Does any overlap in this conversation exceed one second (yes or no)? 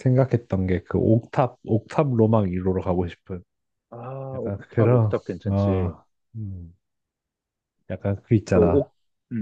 yes